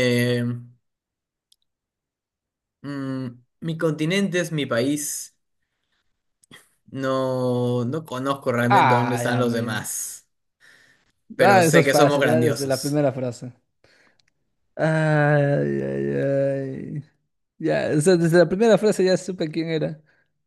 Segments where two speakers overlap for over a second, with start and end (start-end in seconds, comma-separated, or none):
8.7-10.0, 11.4-13.0